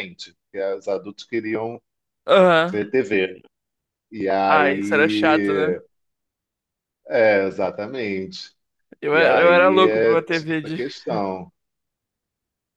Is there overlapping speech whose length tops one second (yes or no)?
yes